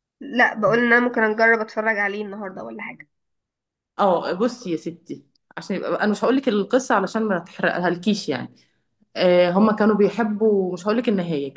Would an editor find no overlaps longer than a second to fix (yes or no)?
yes